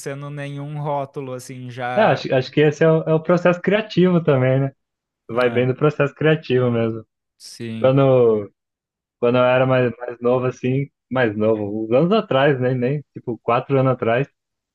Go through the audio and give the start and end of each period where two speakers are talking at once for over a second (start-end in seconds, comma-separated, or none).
none